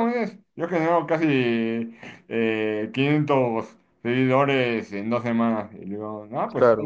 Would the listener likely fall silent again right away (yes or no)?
yes